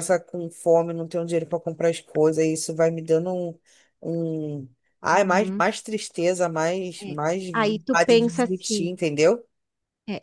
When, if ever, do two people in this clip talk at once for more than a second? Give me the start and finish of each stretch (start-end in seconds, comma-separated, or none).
7.0-8.9